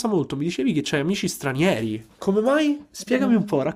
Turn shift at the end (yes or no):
yes